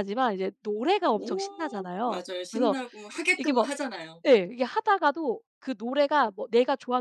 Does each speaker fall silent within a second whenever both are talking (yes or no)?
no